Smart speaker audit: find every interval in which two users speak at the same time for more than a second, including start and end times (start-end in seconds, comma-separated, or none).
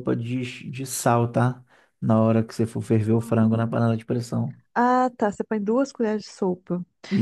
none